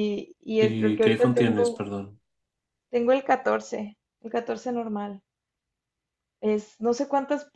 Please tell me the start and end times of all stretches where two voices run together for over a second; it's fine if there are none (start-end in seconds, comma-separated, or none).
0.6-1.9